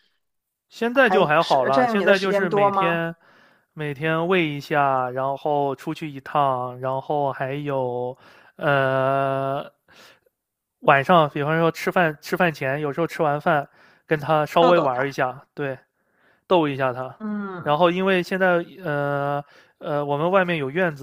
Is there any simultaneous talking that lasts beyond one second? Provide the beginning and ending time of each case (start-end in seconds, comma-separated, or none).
0.9-3.0